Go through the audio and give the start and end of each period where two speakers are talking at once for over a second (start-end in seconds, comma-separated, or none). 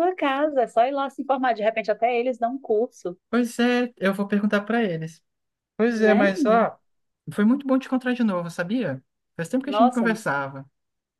none